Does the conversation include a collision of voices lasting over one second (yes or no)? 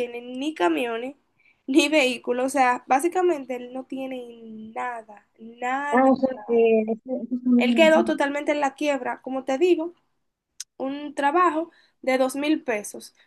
no